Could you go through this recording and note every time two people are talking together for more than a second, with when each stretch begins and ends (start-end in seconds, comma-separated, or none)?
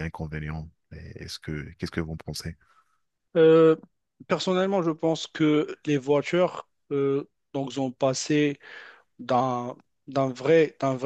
none